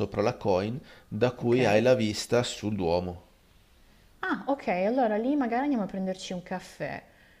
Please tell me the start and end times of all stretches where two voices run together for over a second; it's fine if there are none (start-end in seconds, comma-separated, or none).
none